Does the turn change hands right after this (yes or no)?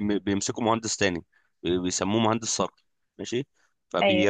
no